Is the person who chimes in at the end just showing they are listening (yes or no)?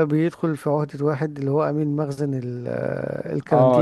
no